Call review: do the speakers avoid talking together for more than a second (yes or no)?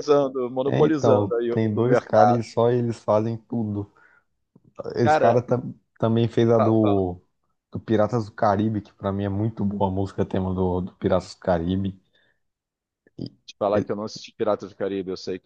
no